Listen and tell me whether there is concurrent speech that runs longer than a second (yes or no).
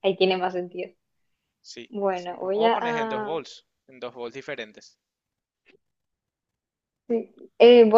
yes